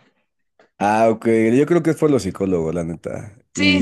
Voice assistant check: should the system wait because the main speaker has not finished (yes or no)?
no